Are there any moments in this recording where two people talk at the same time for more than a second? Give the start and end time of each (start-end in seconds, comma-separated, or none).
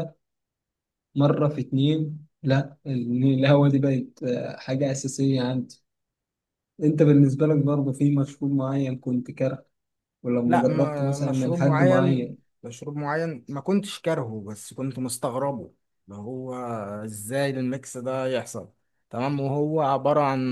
10.5-12.4